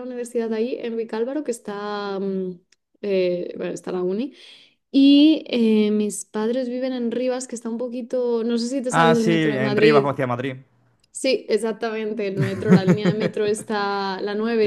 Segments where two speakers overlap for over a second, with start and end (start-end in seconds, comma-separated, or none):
8.9-10.1